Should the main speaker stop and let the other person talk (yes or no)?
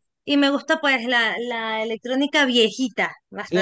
yes